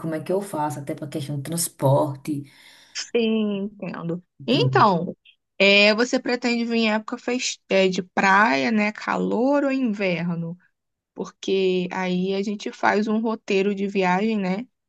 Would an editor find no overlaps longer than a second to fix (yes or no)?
yes